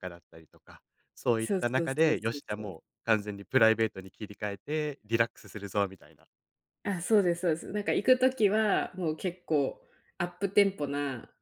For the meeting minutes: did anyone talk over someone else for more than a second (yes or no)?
yes